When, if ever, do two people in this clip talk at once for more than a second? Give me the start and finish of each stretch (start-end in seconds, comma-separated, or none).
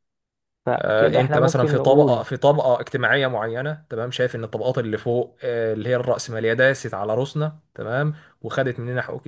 0.7-2.2